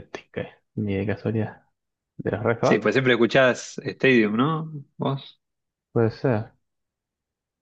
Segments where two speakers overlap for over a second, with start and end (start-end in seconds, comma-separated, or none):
none